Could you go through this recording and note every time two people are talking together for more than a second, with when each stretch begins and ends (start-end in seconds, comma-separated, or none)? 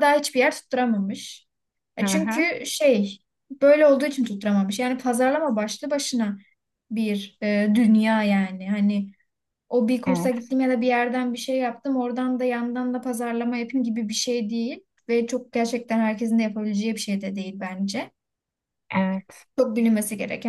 none